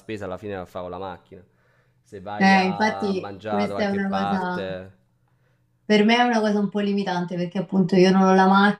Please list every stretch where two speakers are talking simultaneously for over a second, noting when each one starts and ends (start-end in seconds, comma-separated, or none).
2.4-4.8